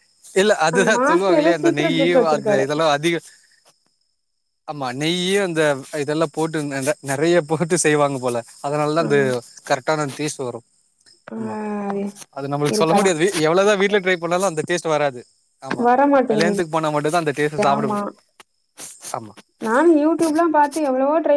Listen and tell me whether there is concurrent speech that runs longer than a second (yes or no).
yes